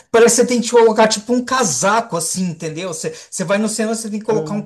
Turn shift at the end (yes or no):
no